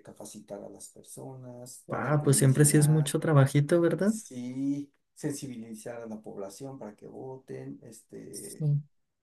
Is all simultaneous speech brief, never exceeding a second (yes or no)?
no